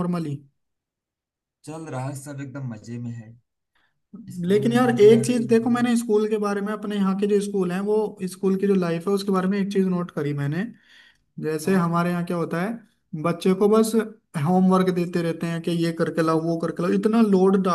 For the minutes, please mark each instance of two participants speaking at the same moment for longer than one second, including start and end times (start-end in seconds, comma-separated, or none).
4.5-5.9